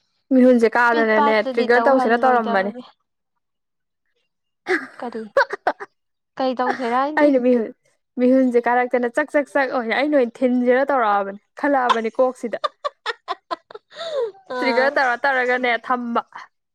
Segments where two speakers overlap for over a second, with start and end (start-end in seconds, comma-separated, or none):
0.9-2.7